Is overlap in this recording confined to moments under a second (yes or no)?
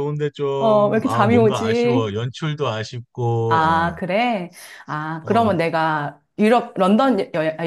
no